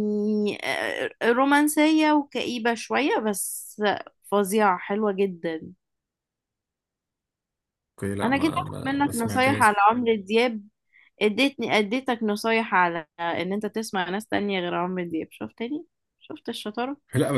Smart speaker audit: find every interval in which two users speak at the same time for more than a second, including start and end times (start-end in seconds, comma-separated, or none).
8.2-9.8